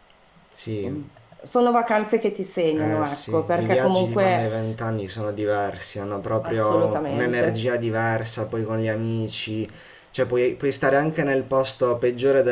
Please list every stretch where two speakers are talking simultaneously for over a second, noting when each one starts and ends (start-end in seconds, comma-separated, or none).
2.8-4.5, 6.4-7.7